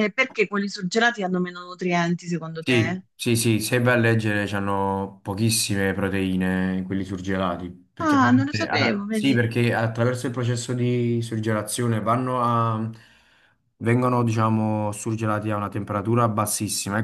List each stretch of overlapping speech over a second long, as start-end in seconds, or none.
8.0-9.4